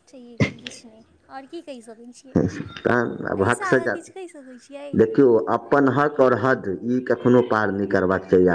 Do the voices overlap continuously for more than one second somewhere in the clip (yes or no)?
no